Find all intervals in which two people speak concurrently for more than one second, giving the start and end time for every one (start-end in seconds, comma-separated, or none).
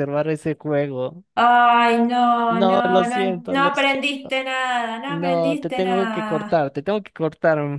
2.5-4.4, 5.0-6.7